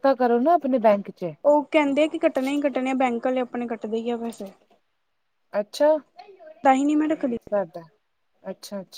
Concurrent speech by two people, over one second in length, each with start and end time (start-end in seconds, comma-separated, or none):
none